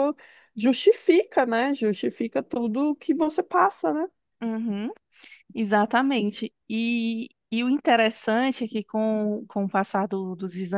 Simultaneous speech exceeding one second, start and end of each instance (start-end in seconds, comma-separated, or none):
none